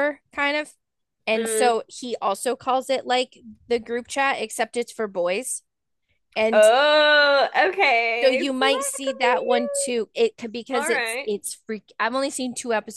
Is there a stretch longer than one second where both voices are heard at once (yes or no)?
yes